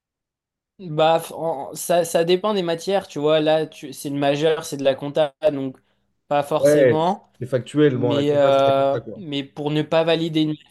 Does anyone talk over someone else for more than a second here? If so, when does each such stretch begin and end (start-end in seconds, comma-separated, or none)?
7.9-9.2